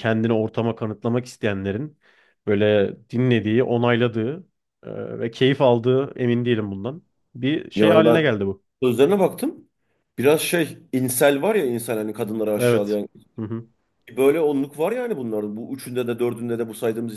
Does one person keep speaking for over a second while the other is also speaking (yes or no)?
no